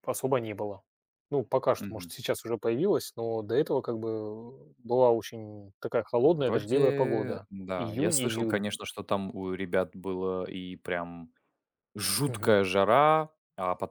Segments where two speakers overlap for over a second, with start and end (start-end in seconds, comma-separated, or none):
6.2-8.7